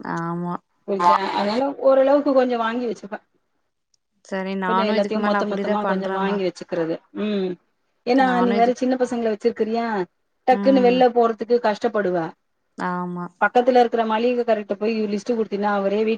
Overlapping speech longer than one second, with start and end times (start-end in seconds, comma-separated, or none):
4.7-6.4